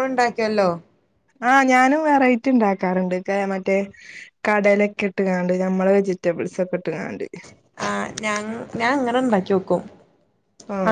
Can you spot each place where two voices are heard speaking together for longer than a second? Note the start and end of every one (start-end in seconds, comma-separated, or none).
none